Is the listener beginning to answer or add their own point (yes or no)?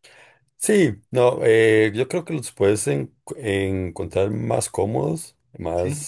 no